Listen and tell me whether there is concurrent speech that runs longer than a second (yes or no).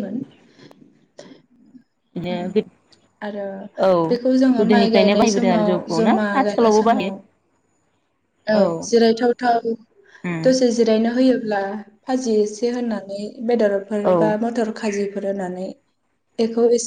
yes